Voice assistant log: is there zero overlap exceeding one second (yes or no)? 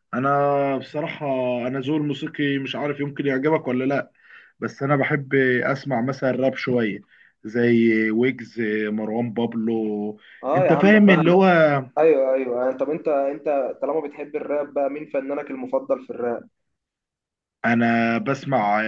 yes